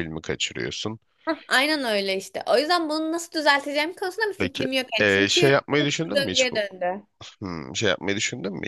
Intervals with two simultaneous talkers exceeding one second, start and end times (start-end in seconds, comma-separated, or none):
4.4-6.6